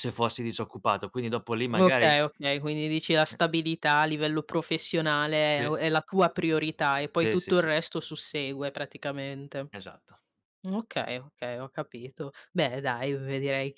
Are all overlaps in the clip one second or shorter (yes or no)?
yes